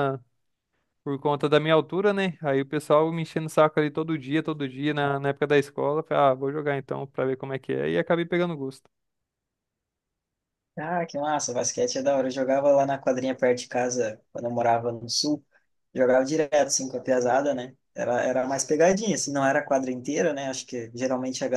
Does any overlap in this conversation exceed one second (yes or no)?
no